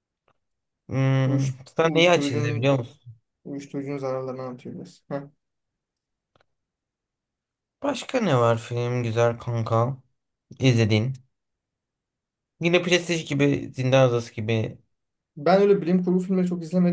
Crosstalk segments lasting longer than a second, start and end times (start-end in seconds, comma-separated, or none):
1.3-2.8